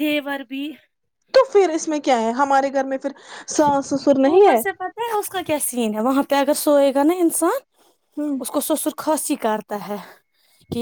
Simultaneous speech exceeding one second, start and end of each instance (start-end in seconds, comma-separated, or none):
none